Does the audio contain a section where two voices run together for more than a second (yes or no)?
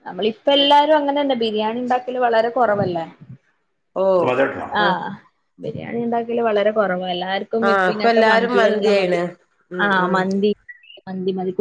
yes